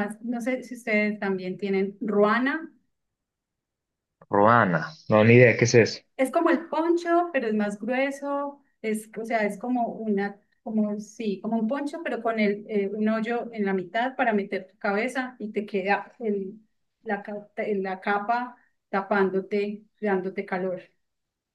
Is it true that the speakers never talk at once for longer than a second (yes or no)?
yes